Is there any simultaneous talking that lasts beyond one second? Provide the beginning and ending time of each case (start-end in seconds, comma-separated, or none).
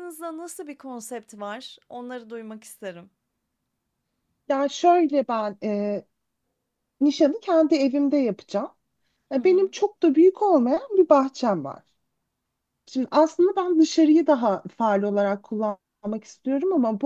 none